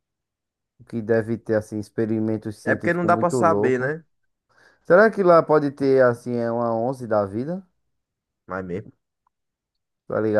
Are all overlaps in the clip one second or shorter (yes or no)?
no